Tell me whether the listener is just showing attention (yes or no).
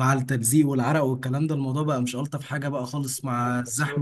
yes